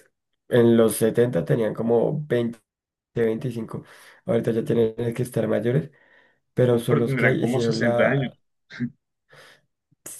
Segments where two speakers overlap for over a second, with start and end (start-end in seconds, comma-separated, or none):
6.7-8.3